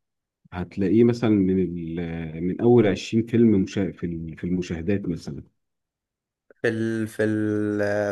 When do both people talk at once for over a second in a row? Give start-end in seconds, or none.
none